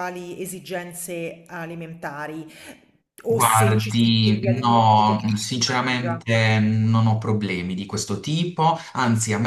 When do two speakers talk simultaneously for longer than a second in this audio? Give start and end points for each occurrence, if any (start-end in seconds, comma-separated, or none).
3.3-6.2